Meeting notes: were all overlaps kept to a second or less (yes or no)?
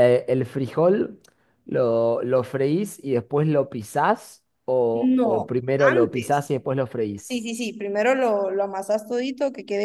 no